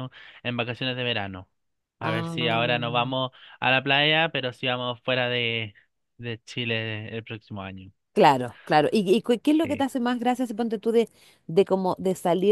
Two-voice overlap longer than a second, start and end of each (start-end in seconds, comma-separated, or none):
none